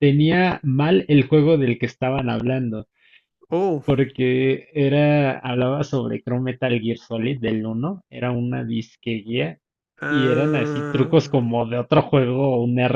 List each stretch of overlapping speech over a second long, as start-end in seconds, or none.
10.1-11.4